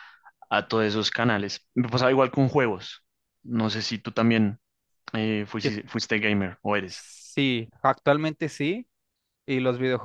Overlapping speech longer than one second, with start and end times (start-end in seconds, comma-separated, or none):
none